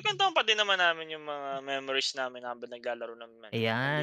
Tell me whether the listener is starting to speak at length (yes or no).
yes